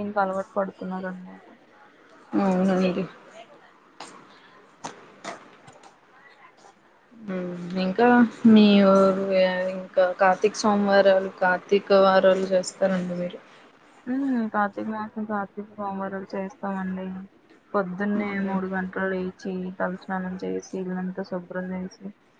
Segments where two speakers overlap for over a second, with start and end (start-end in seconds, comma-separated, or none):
none